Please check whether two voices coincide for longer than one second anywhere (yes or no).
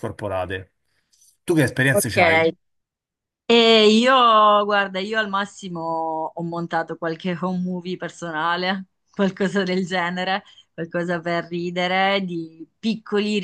no